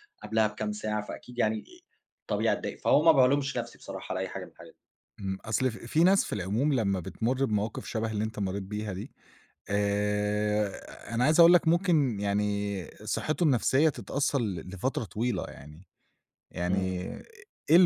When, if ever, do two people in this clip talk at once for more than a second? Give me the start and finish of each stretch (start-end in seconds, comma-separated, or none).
none